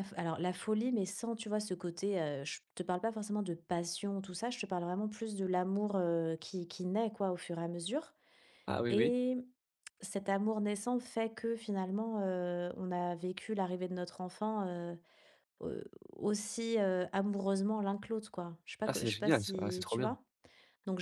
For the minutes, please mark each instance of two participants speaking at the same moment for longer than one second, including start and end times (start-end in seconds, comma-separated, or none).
18.9-20.1